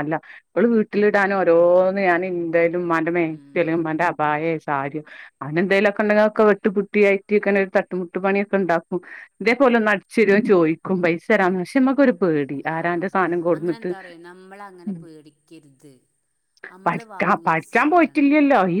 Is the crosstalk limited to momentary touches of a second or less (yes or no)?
no